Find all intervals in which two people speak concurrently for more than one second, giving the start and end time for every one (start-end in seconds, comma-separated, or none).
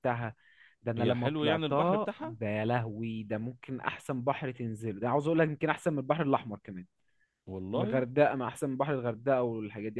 1.0-2.4